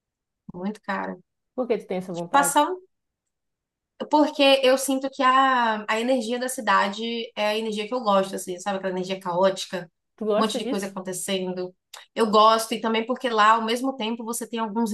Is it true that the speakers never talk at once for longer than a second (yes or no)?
yes